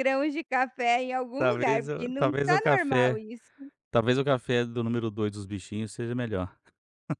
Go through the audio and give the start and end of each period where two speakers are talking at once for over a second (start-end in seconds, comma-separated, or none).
1.4-3.2